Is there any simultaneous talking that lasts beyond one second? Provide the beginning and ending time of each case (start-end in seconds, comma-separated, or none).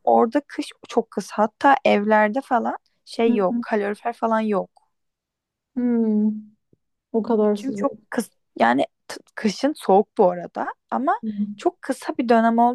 none